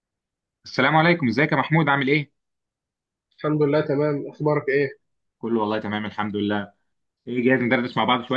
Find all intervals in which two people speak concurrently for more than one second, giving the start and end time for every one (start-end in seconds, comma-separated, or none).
none